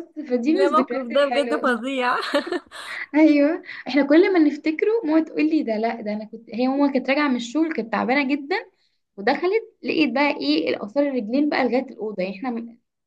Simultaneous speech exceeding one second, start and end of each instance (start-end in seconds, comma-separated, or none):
0.5-1.8